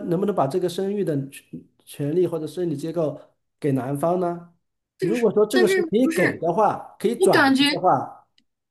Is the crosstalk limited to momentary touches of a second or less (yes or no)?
no